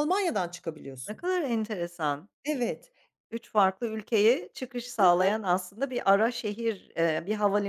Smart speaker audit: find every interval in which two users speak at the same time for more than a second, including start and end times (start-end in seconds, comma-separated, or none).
none